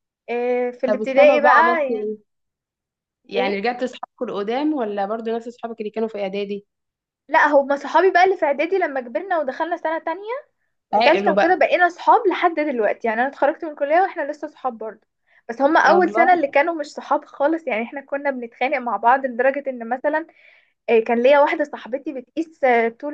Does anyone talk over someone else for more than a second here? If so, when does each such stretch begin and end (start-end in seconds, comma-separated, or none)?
0.9-2.1